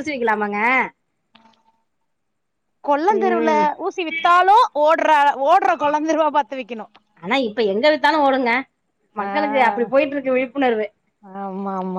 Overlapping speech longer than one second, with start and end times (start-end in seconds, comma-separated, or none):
none